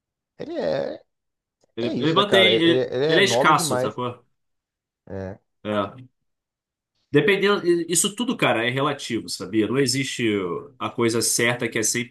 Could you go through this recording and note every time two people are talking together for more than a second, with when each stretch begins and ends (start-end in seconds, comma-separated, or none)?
1.8-4.0